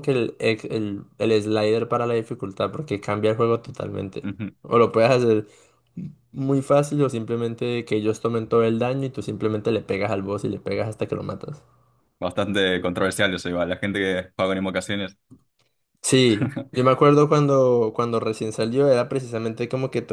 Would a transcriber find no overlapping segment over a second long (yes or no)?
yes